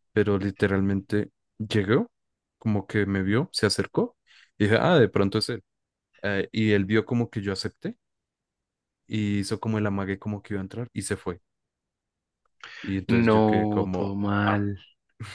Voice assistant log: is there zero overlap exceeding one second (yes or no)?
no